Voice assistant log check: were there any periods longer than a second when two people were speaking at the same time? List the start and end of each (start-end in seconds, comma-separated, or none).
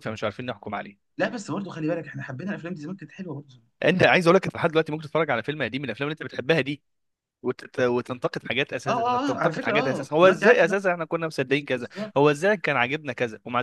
8.9-10.8